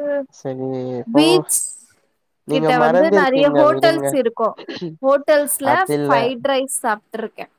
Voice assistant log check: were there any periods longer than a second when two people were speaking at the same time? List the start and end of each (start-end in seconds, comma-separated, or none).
2.5-4.1